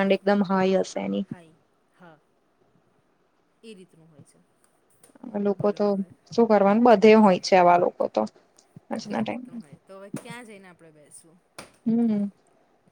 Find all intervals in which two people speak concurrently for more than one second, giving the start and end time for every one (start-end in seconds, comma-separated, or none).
none